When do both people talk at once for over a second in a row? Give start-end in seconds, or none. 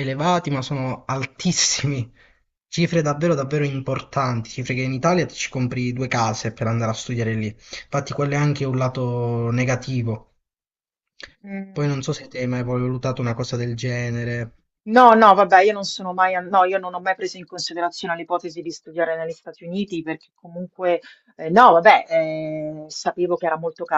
none